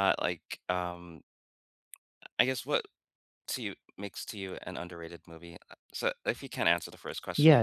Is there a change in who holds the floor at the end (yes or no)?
yes